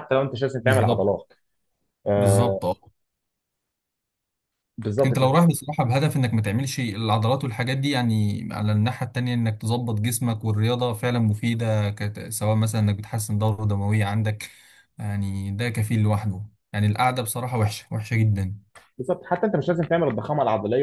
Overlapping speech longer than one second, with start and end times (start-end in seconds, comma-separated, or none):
none